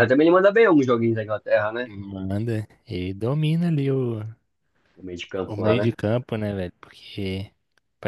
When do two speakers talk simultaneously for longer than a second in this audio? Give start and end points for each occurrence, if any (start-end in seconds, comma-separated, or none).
none